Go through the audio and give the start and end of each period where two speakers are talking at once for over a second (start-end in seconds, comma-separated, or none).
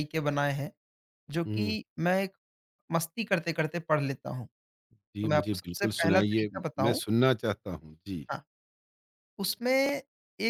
5.2-7.0